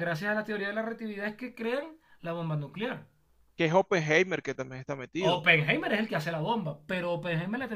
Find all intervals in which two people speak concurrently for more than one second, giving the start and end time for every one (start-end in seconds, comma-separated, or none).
none